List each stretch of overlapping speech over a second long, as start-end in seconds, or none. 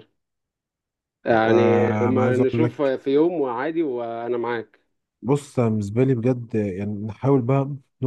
1.5-3.0